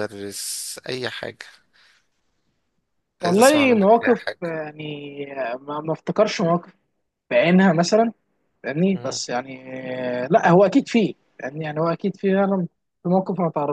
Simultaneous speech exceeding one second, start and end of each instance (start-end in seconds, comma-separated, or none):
3.2-4.6